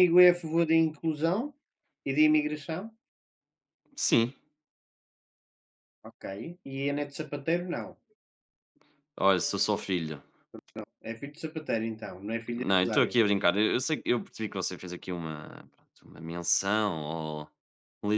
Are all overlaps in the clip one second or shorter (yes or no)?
yes